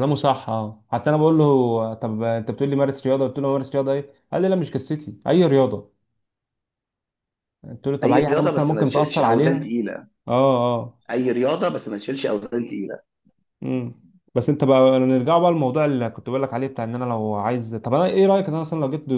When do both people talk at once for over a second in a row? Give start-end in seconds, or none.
8.0-9.6